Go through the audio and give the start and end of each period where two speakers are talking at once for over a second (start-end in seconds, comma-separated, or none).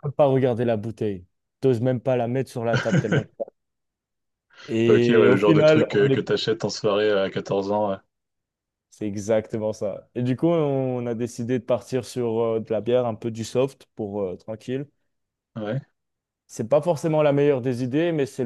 4.9-6.2